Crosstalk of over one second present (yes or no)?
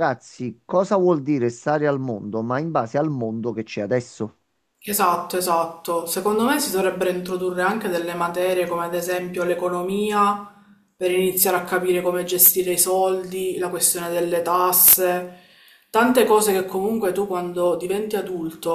no